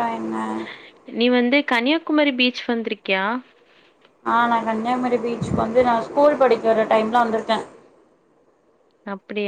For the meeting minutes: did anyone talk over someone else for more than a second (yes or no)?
no